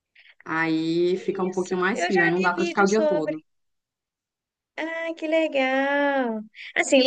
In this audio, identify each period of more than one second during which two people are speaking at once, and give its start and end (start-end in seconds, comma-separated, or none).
1.5-3.4